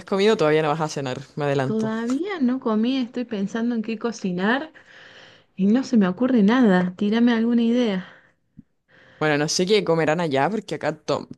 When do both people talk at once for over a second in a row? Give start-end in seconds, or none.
none